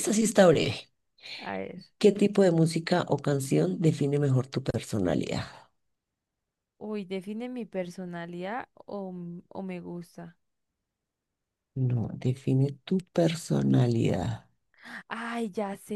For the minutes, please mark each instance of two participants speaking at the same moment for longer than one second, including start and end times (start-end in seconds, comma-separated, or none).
none